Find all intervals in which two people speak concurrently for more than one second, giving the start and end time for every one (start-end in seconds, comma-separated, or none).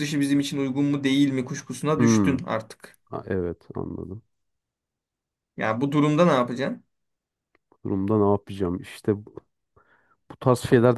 none